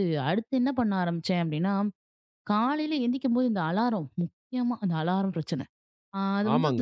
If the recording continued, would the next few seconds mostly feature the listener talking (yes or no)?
yes